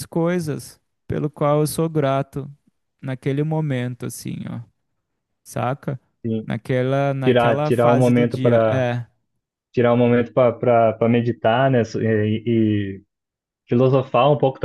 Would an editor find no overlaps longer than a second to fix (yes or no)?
no